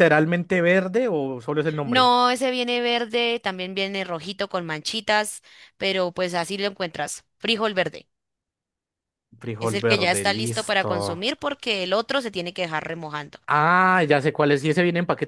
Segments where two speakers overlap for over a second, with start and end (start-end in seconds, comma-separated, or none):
9.6-10.9